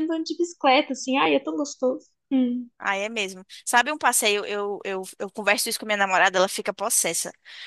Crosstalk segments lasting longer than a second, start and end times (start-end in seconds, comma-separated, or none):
none